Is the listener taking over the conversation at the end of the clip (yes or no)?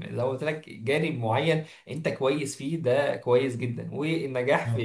no